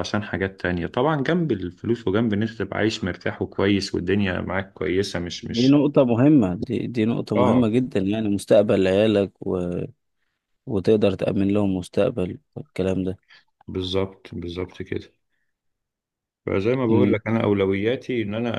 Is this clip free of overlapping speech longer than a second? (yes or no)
yes